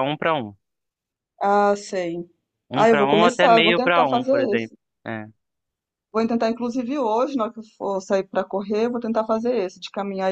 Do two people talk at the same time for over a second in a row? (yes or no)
yes